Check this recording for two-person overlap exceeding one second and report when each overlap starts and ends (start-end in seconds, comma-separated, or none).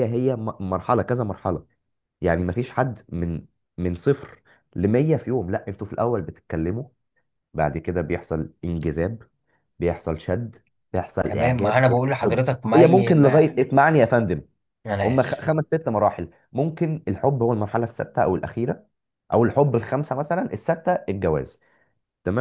11.2-13.6